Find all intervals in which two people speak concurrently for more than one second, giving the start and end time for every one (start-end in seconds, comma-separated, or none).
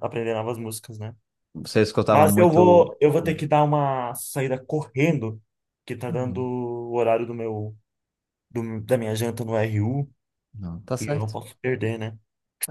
2.1-3.4